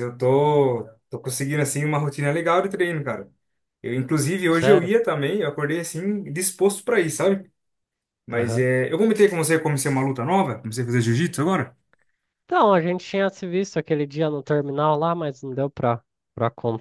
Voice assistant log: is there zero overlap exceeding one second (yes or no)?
yes